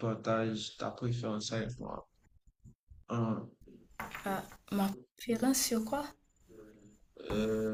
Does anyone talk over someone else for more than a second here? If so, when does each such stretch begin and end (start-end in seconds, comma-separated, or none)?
none